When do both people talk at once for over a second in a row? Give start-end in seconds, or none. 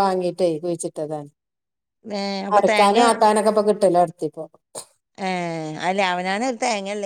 none